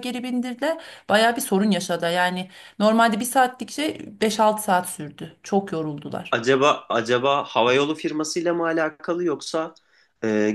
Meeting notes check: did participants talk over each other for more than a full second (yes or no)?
no